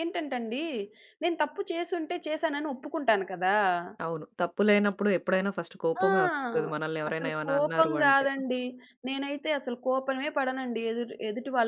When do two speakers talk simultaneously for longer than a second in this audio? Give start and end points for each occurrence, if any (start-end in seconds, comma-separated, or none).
5.9-8.3